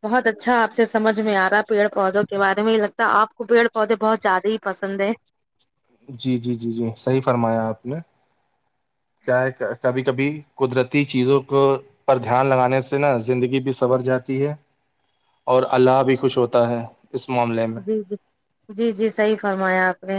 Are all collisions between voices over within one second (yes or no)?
yes